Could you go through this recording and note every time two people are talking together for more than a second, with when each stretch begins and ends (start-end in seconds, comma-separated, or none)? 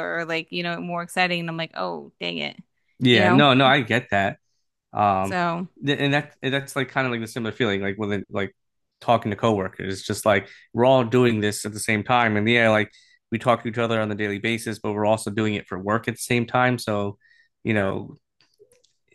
none